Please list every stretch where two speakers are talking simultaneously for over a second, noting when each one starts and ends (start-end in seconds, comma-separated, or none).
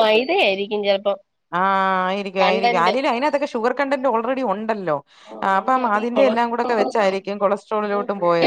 5.5-7.3